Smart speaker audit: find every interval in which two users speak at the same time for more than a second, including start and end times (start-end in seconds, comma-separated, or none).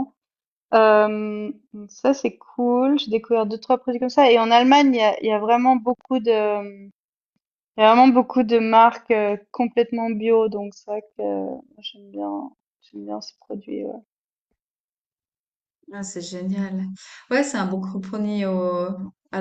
none